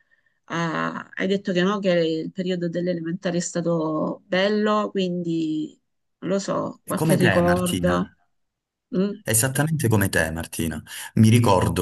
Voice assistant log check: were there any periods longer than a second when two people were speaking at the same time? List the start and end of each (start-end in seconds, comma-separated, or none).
6.8-8.1